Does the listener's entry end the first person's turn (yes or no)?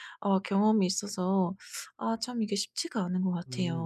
yes